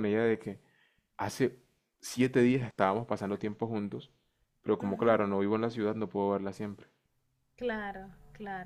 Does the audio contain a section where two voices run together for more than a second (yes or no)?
no